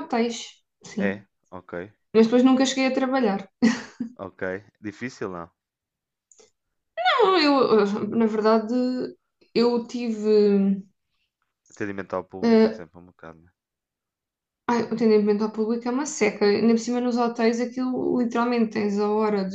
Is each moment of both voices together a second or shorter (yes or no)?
yes